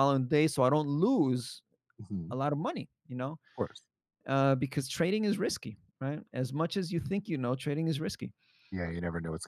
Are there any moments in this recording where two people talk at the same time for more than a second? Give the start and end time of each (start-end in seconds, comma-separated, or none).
none